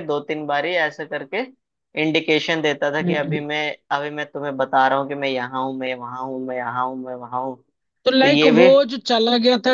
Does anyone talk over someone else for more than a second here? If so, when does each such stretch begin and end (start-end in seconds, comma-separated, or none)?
none